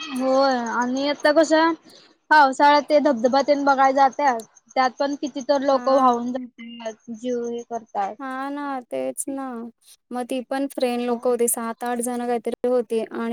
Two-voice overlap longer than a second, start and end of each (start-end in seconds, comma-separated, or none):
none